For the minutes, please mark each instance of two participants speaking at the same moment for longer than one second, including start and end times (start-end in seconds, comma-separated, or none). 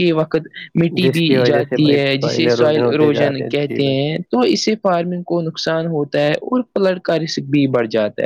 1.0-4.1